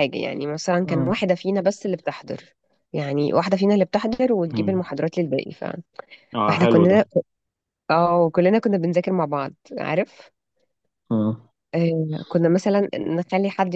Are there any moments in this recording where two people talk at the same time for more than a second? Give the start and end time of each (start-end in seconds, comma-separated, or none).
none